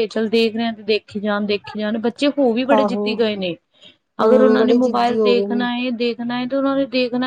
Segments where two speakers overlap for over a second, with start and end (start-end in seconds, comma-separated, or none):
4.2-5.6